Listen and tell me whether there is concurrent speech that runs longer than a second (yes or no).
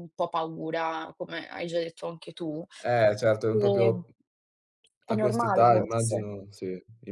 yes